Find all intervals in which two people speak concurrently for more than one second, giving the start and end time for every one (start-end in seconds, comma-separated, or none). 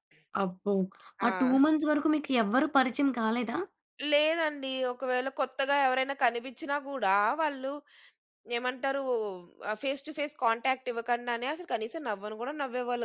none